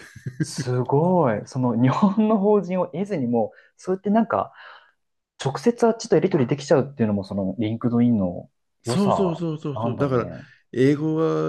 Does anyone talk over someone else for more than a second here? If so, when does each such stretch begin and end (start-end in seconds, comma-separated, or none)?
8.8-10.3